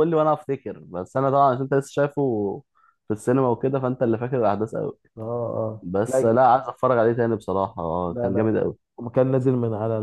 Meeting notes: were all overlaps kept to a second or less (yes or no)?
yes